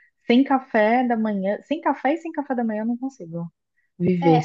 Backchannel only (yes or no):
no